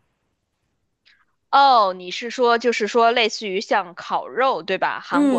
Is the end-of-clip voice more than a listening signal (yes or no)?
yes